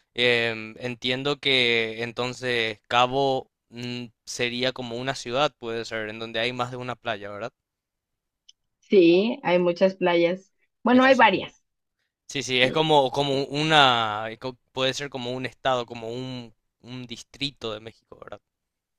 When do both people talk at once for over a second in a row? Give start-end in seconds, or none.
none